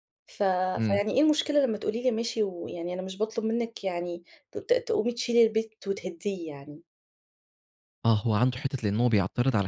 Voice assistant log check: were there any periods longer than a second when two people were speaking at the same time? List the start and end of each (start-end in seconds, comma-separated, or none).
none